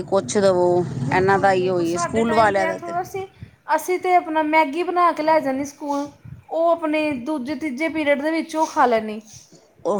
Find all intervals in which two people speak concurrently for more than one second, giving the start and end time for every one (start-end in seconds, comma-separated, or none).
1.1-2.8